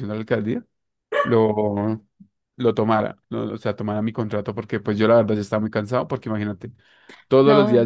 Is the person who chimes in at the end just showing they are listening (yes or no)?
yes